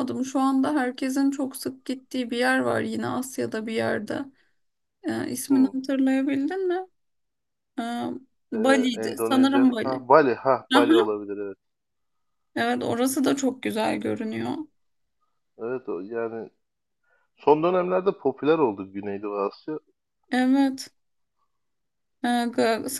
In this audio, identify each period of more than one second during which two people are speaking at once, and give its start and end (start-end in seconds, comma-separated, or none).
8.5-10.1